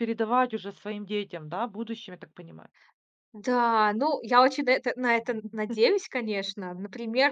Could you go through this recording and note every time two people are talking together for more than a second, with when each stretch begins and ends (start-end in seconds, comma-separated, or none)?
none